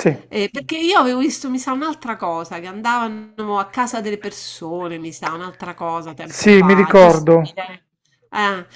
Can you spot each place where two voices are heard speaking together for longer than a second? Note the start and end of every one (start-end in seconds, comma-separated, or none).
6.3-7.6